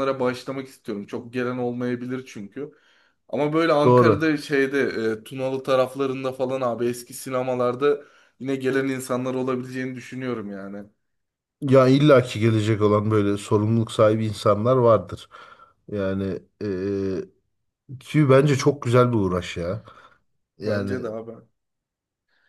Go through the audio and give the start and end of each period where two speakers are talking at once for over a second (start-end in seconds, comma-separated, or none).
none